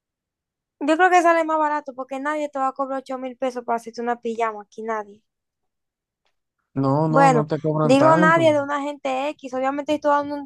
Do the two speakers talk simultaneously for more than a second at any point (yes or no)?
yes